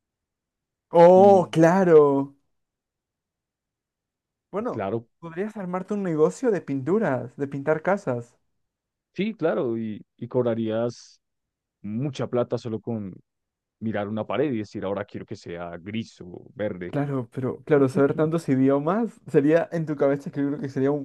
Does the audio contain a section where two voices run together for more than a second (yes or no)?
no